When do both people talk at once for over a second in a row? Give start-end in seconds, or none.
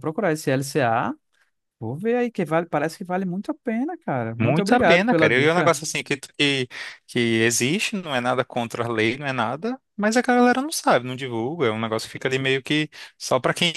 4.4-5.7